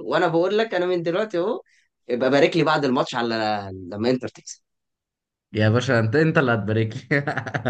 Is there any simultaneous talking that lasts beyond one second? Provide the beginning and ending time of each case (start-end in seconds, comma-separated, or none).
none